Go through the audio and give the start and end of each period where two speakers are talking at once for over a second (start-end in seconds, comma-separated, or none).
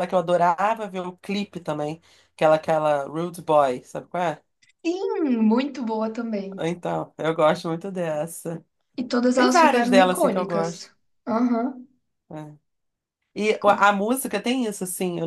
9.3-10.9